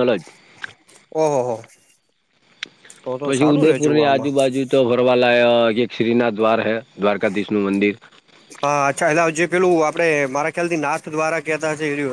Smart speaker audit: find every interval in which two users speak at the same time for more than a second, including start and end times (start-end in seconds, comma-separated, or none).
none